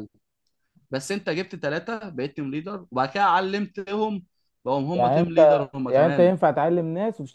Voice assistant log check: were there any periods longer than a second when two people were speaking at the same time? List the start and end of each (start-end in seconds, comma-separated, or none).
4.9-6.3